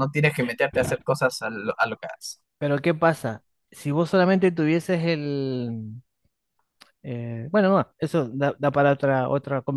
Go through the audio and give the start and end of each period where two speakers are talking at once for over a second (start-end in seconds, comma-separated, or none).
none